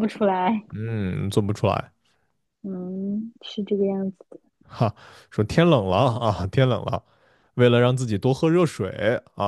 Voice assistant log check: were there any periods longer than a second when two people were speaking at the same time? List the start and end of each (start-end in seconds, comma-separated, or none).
none